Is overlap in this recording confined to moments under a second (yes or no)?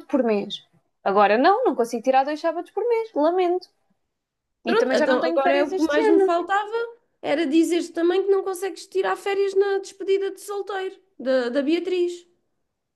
no